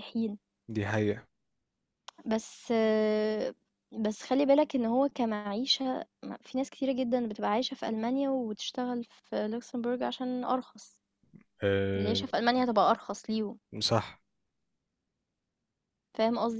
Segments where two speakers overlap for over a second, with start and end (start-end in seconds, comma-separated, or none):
none